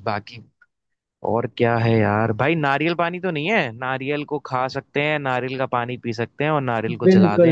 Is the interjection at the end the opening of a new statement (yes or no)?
yes